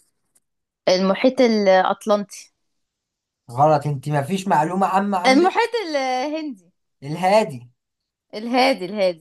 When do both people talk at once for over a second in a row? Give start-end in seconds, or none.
none